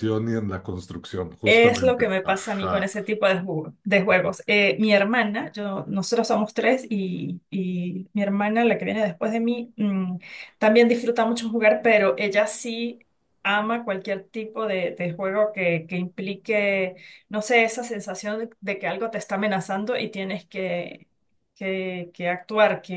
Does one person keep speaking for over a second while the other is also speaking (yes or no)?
yes